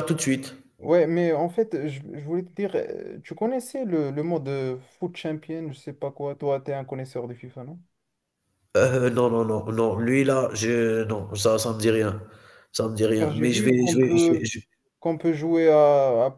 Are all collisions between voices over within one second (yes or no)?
no